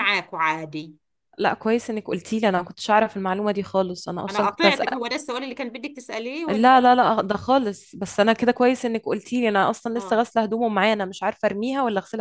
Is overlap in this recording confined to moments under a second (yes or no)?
yes